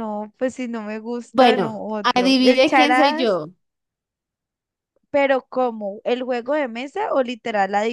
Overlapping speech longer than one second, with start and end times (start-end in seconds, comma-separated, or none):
1.3-3.4